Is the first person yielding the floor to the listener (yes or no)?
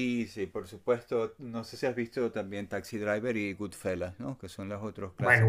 yes